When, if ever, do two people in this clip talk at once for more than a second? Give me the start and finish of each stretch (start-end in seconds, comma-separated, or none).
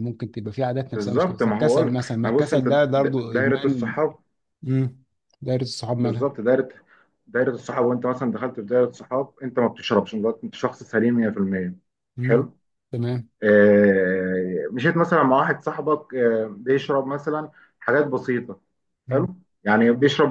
1.4-3.9